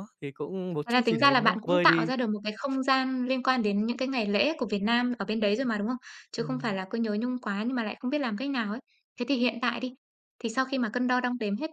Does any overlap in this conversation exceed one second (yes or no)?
yes